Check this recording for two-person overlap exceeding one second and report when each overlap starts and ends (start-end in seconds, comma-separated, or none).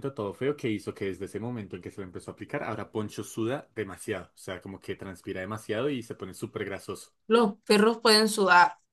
none